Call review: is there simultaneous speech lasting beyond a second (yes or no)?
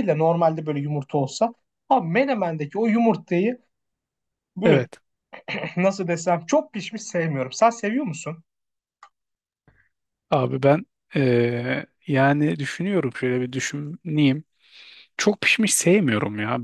no